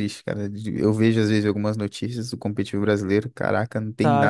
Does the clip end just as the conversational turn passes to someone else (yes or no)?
yes